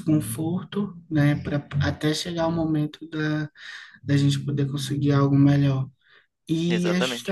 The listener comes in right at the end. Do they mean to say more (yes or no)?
no